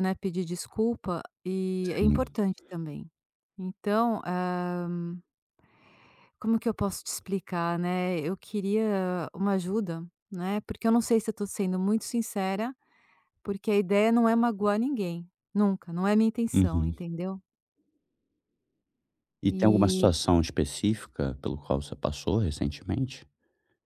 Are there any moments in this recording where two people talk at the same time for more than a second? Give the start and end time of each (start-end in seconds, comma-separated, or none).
none